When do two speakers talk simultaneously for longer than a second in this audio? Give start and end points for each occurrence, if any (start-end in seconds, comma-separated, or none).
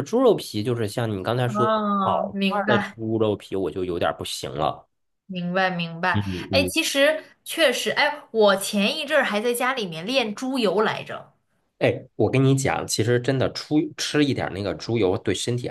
1.5-3.0